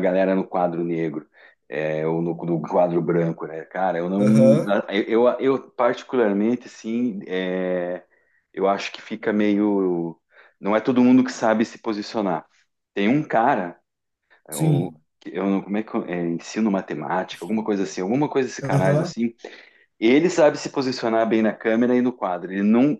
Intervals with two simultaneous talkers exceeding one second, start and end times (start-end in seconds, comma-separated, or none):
none